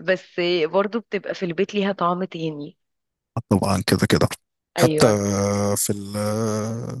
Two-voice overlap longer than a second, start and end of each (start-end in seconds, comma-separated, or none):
none